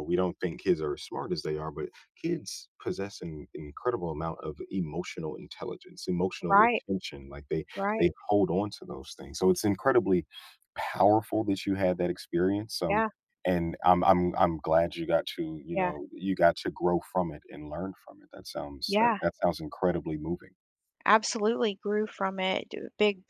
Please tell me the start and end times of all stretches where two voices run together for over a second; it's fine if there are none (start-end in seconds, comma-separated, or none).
none